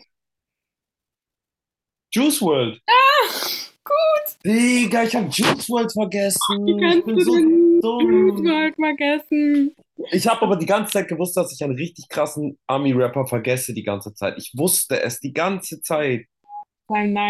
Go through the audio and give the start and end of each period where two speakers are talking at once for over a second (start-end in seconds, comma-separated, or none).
6.7-8.6